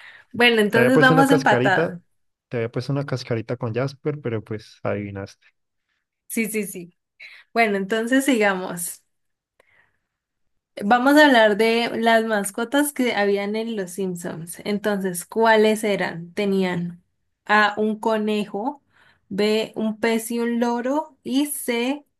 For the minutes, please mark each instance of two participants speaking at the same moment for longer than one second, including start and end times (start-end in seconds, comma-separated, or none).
0.7-1.9